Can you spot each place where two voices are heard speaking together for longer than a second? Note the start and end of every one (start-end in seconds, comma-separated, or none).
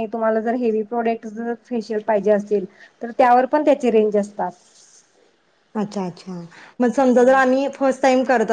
none